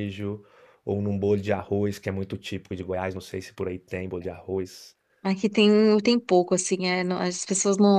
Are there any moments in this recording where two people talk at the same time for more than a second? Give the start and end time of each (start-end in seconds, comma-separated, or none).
none